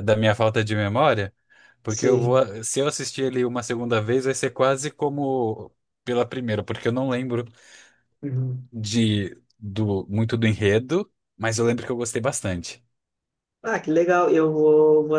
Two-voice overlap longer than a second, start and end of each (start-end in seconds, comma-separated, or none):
none